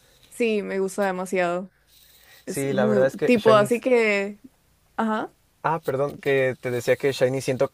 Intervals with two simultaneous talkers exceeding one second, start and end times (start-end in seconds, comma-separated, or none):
2.5-3.8